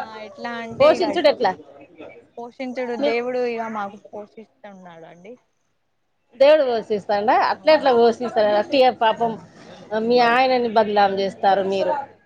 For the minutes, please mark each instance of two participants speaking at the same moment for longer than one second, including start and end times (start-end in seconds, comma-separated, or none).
none